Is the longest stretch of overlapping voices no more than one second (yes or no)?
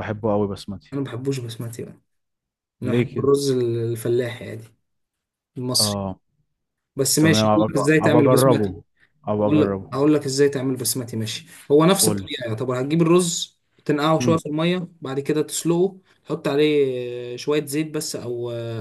no